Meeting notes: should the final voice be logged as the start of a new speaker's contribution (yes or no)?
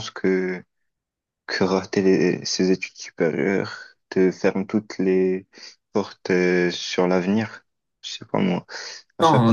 yes